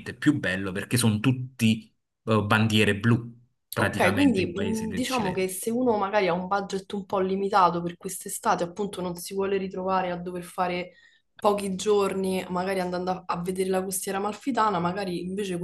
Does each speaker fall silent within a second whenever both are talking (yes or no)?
no